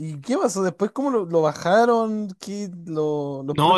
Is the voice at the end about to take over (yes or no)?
yes